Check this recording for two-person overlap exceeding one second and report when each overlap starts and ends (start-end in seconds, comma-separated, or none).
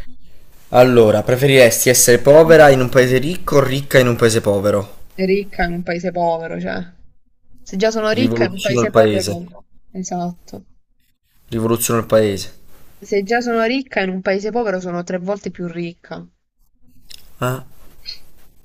8.1-9.4